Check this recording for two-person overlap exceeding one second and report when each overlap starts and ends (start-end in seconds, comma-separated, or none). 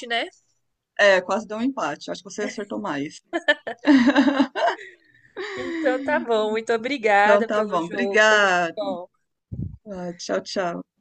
7.1-8.8